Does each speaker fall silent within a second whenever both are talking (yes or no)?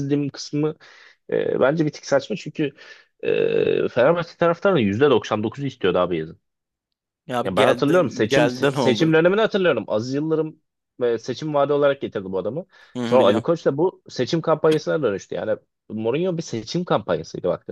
no